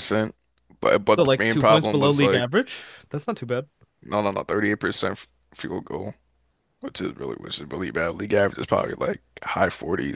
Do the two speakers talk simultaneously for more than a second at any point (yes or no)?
yes